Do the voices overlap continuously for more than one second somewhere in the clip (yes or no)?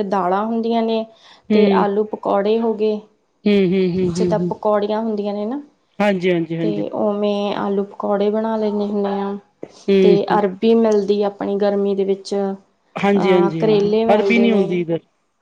yes